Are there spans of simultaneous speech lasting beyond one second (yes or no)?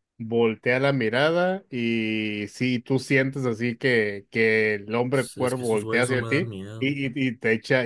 yes